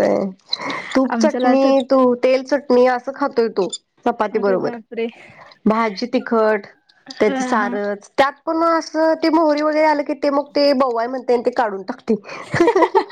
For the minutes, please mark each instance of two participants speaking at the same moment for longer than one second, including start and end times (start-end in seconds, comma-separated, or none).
none